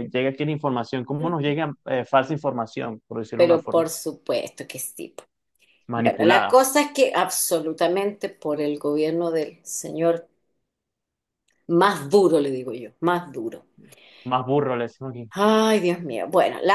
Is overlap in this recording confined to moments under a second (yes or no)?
yes